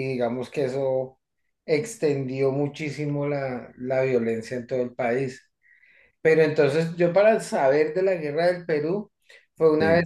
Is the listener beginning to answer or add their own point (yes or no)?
no